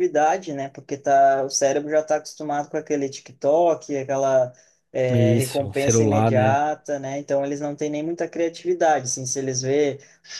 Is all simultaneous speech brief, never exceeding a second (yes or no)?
no